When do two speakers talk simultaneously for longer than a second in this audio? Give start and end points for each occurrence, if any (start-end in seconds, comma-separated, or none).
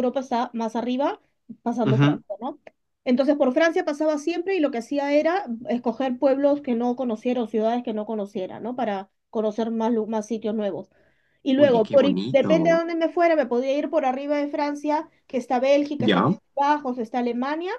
11.6-12.8